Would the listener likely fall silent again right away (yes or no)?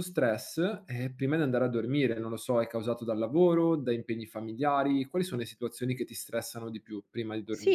no